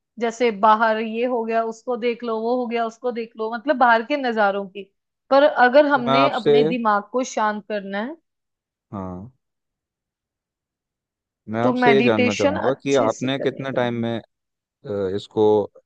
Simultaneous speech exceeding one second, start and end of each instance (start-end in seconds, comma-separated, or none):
11.6-14.1